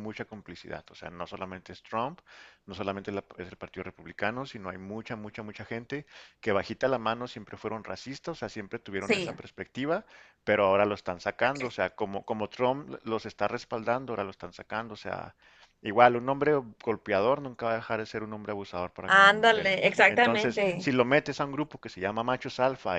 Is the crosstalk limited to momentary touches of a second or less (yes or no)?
no